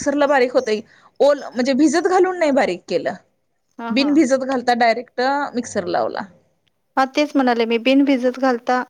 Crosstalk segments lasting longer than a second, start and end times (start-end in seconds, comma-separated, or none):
none